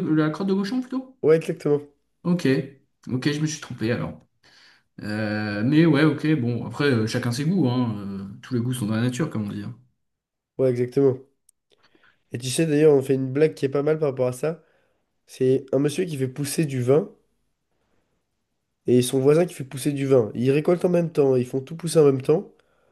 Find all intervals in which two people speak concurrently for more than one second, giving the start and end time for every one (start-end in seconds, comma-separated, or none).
none